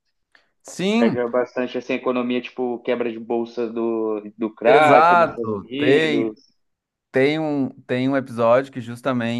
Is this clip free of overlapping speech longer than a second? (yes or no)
no